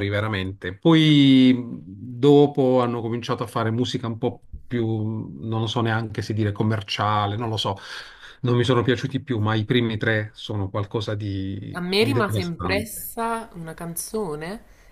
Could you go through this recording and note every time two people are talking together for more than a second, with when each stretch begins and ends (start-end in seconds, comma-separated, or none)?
11.7-13.1